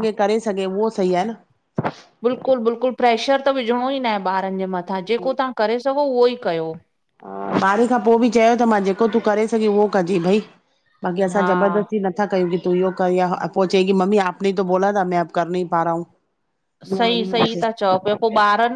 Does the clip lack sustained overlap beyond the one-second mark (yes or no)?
yes